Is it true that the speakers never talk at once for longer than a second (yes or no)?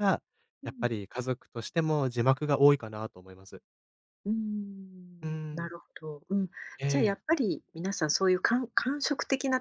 yes